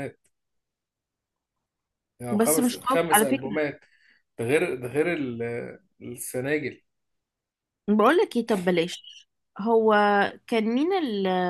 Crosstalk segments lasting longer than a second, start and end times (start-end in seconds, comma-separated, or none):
2.3-3.6